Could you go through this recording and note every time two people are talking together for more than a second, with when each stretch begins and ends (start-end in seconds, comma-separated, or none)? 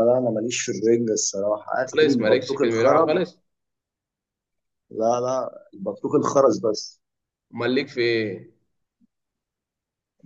1.8-3.2